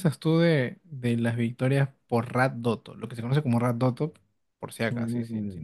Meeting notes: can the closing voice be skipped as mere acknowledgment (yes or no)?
no